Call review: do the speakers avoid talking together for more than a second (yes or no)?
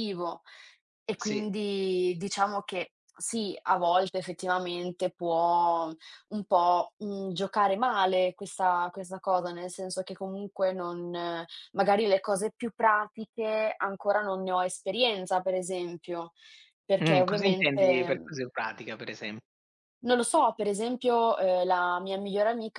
no